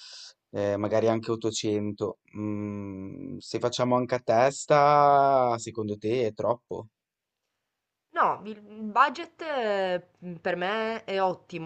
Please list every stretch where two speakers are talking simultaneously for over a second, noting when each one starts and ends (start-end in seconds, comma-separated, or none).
none